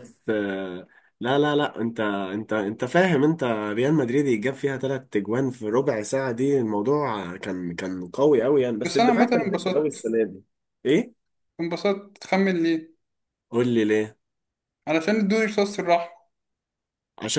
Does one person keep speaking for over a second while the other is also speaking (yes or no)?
yes